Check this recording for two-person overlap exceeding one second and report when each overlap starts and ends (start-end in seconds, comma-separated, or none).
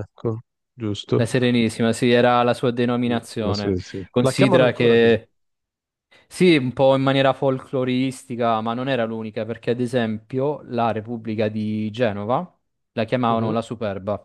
3.0-5.2